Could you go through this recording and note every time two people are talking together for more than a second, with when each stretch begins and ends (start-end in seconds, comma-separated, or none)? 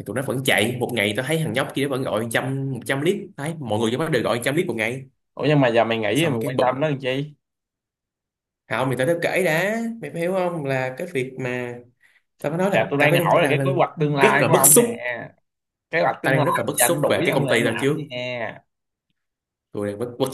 12.7-14.8, 16.2-18.0